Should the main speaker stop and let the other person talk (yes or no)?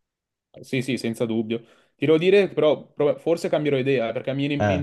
no